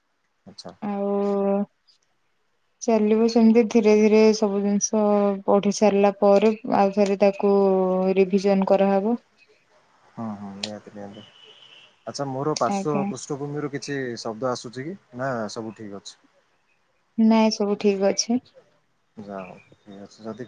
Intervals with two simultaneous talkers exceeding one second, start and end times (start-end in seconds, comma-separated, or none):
none